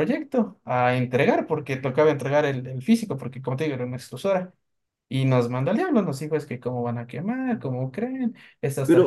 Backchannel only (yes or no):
no